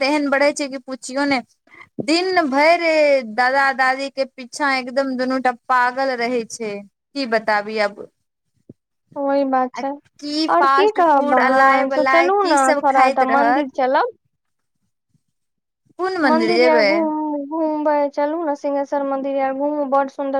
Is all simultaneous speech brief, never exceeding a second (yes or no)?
no